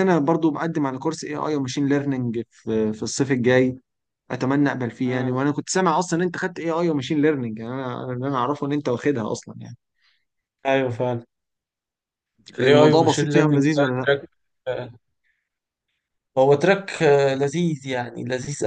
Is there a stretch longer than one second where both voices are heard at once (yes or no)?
yes